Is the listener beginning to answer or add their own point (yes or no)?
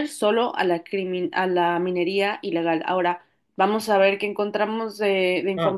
no